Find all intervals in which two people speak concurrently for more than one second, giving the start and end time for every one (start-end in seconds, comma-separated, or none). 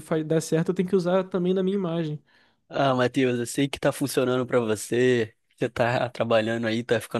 none